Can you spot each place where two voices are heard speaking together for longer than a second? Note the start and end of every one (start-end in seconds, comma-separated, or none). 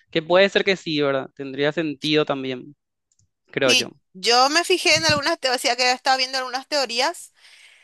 none